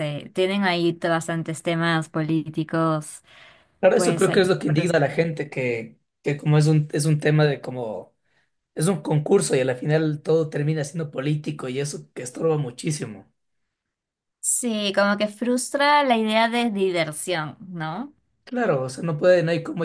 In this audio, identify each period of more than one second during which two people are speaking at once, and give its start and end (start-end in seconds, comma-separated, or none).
3.9-5.3